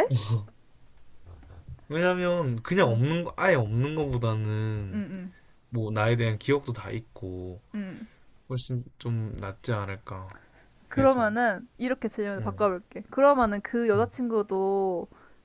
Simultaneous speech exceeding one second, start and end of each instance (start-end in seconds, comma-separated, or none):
none